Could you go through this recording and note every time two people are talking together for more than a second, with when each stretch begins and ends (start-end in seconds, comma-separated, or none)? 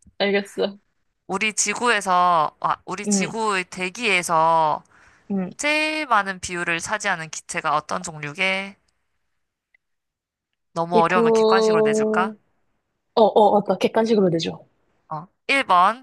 10.9-12.3